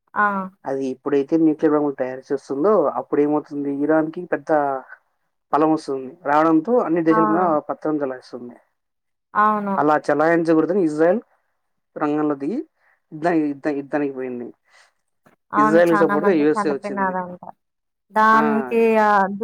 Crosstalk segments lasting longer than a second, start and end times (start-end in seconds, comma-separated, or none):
15.6-17.1